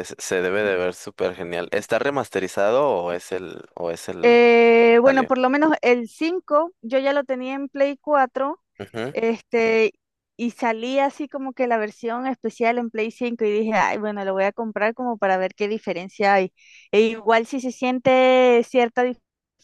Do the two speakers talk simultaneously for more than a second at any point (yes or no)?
no